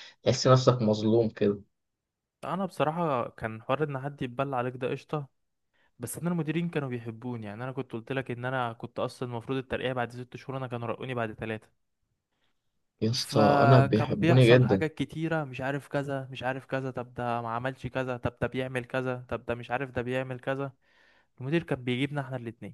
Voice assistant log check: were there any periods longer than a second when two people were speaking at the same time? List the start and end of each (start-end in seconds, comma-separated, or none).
13.2-14.8